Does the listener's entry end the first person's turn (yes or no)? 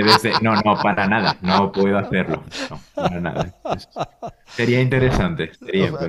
yes